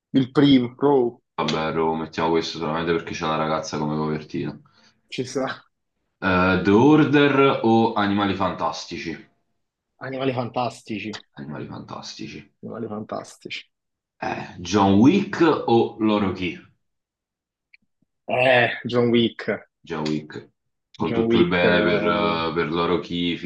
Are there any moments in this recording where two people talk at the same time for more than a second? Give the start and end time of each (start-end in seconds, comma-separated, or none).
21.0-22.3